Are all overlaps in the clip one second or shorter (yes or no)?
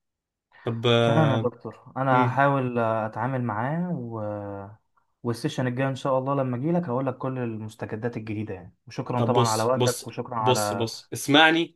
no